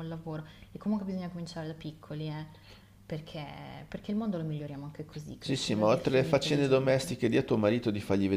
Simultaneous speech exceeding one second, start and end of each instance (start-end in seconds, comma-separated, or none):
5.4-7.1